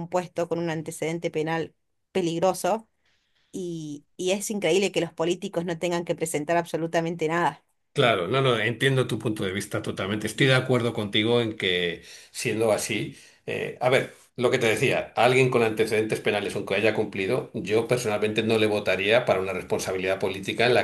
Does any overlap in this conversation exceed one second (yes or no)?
no